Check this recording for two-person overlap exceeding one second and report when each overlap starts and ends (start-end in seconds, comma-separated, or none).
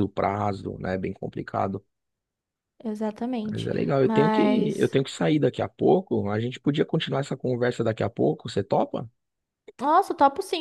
3.5-5.0